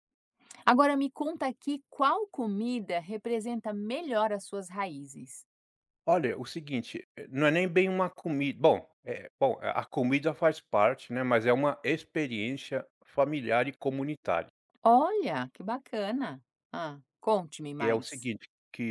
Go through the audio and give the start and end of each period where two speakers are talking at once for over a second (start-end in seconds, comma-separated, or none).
none